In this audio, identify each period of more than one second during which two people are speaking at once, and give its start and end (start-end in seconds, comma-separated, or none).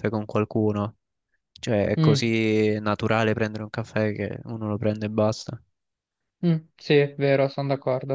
none